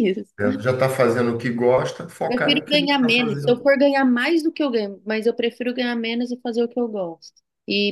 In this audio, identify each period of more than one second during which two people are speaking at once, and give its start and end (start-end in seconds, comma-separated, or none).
2.3-3.6